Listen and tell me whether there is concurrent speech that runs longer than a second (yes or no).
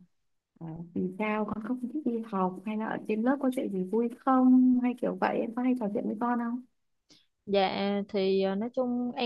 no